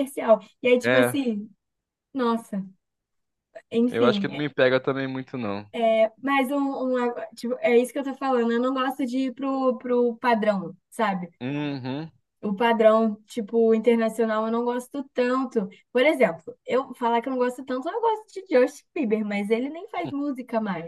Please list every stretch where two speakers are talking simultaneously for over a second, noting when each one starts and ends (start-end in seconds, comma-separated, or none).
none